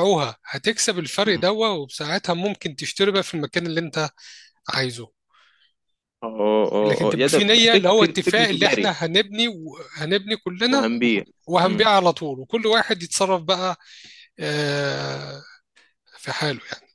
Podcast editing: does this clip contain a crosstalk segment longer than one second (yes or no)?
yes